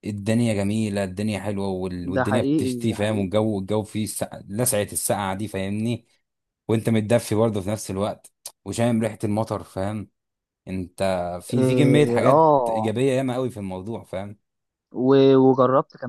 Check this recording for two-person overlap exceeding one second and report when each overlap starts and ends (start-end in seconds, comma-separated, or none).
2.0-3.3, 11.5-12.9